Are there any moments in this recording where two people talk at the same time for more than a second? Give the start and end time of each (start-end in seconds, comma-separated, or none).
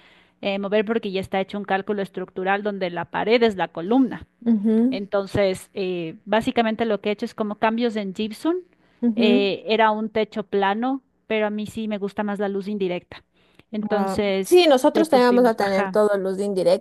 13.9-16.0